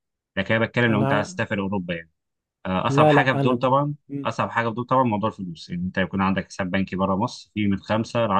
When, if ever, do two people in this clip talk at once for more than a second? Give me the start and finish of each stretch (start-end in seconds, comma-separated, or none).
2.9-4.3